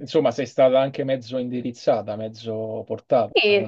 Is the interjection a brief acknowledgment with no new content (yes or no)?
no